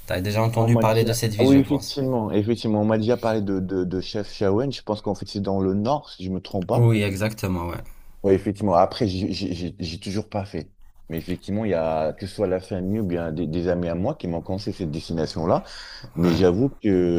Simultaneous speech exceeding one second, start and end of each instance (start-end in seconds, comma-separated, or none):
0.6-2.0